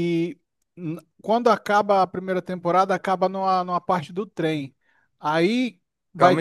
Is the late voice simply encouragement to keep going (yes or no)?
no